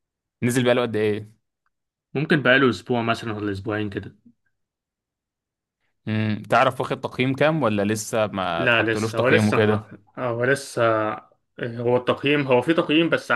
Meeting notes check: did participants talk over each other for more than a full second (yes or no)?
yes